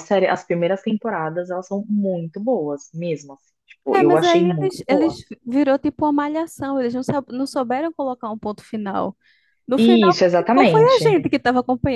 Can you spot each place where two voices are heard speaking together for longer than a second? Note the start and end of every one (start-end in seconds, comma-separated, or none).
3.9-5.2, 9.8-11.2